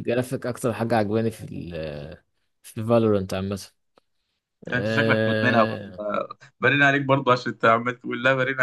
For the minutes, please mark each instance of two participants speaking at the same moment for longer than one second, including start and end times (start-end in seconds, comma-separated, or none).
4.7-6.0